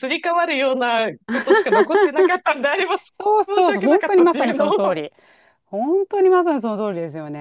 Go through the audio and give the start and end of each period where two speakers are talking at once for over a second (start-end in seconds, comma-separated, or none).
3.1-5.0